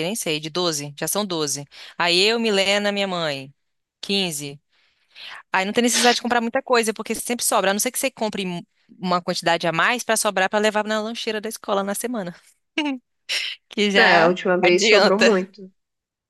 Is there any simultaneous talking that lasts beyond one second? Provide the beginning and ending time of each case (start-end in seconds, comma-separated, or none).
13.9-15.3